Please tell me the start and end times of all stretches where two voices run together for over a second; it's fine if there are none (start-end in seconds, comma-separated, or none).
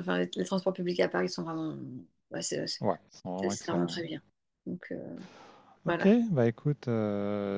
2.8-4.1